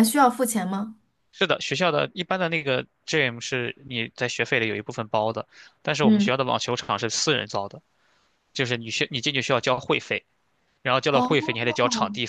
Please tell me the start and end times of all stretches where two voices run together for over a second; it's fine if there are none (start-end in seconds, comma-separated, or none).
none